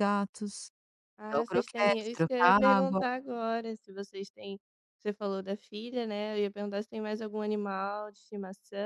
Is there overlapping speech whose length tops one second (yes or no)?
yes